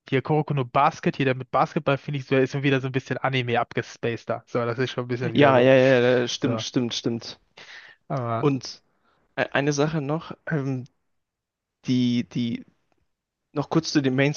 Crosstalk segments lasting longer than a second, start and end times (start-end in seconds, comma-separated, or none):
none